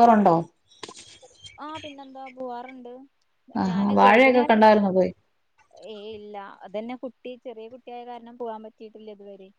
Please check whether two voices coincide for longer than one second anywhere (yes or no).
yes